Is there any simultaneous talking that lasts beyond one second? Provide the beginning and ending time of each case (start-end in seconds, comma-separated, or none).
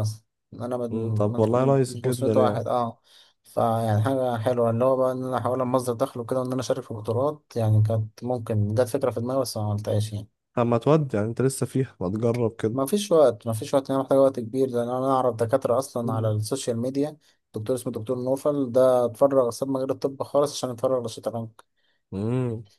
0.9-2.6